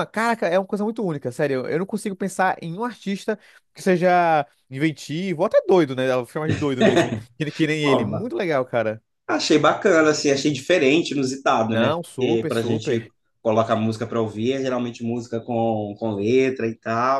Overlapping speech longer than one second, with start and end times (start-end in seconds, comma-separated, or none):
11.7-13.1